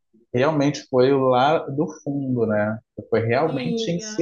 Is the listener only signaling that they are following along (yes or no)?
yes